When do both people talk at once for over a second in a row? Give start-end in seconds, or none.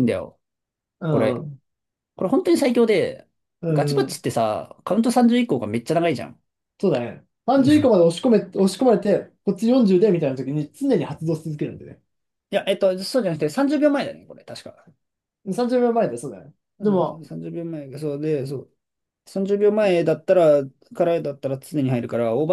none